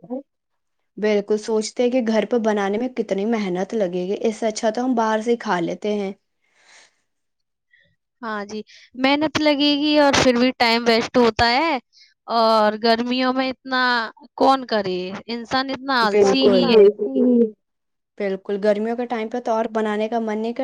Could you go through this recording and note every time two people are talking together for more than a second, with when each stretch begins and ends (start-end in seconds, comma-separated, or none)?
none